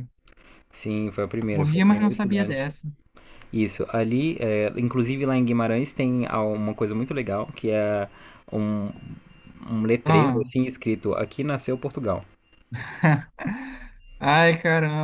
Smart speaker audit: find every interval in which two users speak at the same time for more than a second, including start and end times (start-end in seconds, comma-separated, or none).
1.5-2.7